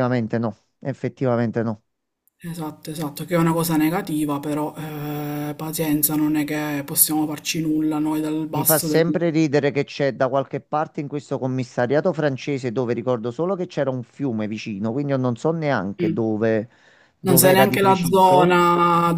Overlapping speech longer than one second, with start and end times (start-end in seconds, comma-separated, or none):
17.2-18.5